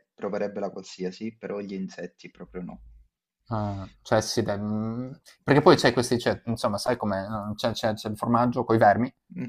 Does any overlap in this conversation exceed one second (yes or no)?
no